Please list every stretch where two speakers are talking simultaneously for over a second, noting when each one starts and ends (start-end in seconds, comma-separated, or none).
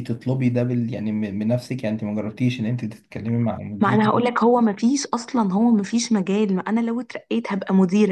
none